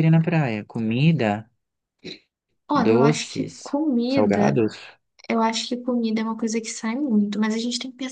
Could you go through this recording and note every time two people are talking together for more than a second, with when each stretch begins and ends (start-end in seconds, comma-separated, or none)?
2.7-4.6